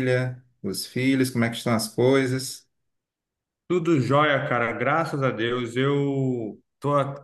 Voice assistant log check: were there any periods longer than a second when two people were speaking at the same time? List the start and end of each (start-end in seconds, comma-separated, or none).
none